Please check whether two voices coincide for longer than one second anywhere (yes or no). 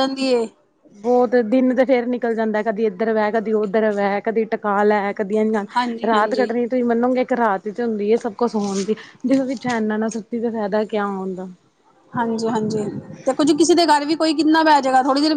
no